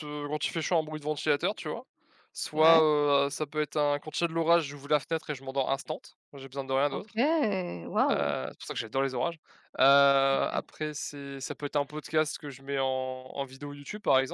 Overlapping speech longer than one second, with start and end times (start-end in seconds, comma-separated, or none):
none